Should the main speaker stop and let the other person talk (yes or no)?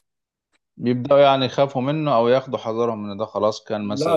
yes